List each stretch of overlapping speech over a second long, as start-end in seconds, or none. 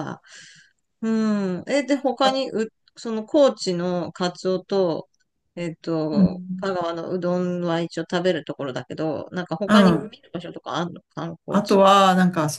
none